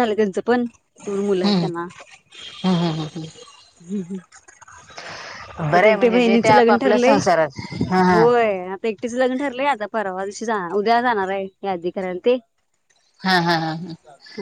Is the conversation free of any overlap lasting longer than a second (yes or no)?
no